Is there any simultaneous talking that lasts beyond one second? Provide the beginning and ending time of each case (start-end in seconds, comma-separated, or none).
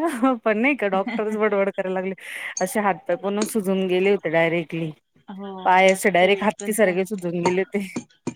5.6-7.2